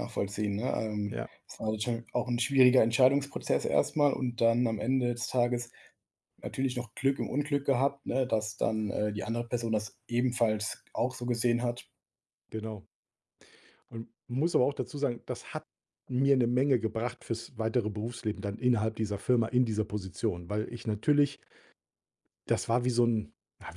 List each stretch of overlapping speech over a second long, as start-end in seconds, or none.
none